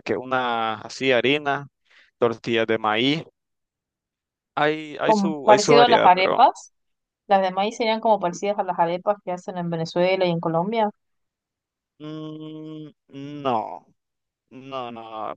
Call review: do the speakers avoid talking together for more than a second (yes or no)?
no